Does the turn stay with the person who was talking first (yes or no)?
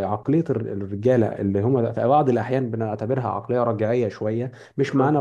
yes